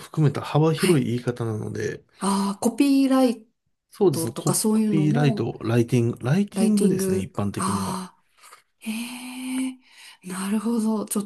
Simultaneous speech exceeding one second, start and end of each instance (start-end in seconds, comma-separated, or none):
4.1-5.5, 6.5-8.0